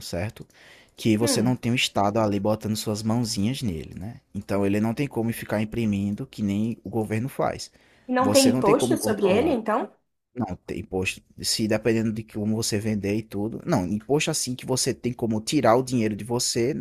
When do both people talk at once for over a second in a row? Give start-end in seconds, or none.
8.2-9.6